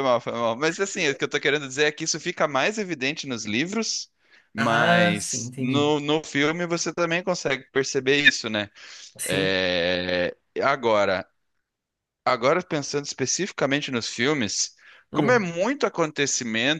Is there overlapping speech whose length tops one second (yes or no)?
yes